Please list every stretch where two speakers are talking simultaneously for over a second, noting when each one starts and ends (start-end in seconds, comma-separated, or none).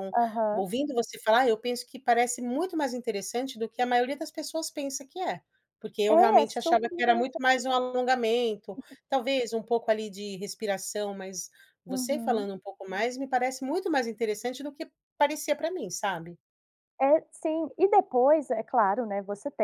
6.1-7.4